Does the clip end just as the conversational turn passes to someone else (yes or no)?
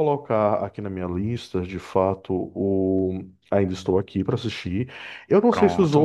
no